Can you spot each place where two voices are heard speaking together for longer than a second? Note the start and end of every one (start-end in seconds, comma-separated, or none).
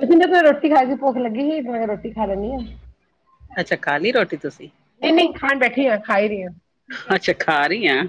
none